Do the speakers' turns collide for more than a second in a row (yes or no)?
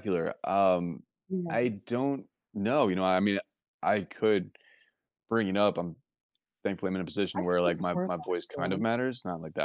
yes